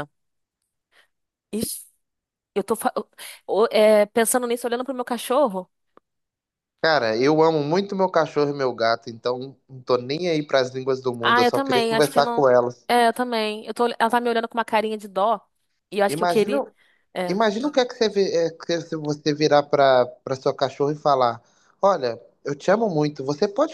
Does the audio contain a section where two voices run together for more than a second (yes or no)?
yes